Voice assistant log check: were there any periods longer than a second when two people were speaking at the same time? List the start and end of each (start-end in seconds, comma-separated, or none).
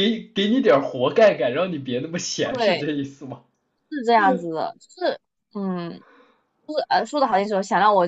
none